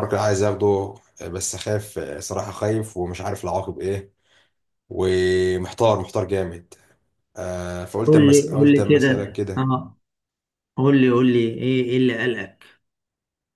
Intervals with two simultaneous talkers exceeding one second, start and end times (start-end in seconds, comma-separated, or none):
8.1-9.7